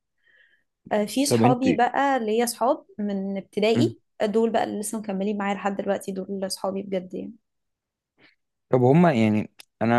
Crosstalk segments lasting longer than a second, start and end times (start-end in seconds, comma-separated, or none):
none